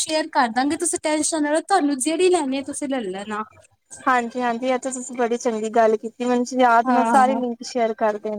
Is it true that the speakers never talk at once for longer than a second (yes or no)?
yes